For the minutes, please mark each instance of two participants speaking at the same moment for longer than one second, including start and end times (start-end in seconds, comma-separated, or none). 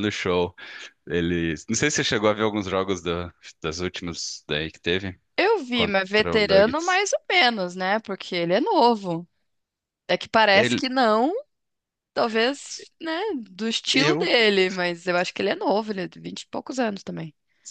5.7-7.0